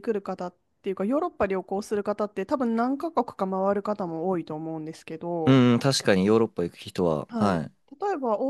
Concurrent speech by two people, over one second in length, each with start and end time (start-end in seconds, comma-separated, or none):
none